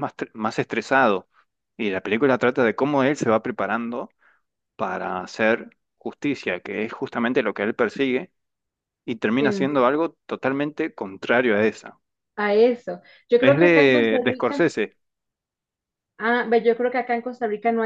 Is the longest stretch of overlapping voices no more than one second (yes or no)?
no